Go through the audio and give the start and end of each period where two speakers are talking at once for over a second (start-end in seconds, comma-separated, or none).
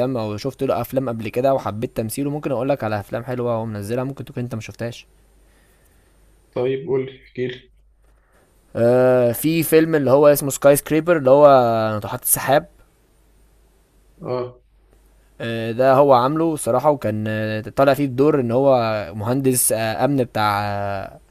none